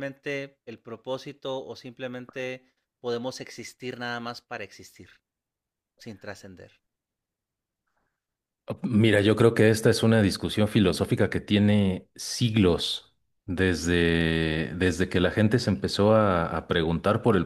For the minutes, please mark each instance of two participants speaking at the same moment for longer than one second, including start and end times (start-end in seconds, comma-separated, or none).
none